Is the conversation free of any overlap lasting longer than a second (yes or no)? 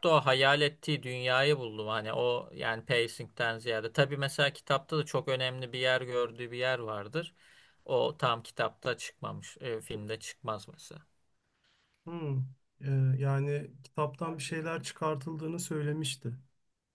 yes